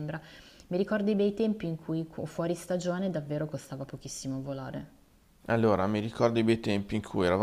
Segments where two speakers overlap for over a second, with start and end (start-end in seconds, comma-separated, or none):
none